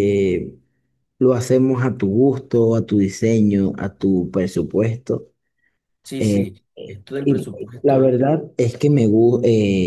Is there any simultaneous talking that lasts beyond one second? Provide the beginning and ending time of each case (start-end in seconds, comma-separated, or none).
6.2-8.2